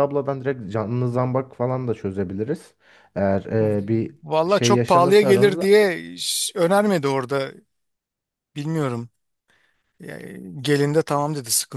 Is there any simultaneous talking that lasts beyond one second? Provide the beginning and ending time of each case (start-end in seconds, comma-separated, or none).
4.2-5.8